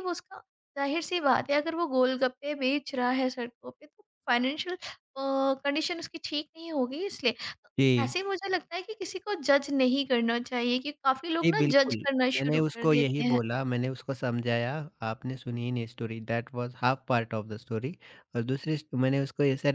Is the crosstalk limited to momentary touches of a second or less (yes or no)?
no